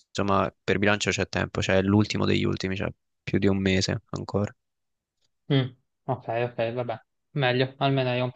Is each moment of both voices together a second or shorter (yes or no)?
yes